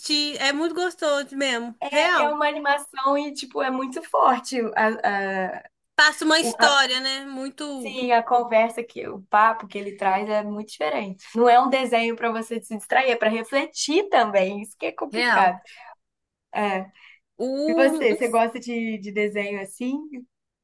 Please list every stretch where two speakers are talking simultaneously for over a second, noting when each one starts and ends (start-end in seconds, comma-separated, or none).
none